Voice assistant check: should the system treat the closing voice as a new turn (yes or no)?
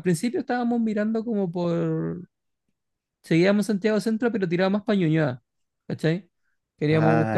no